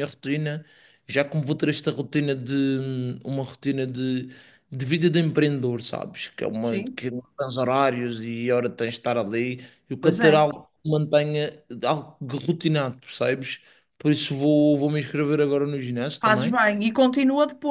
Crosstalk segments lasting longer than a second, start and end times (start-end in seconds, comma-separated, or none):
none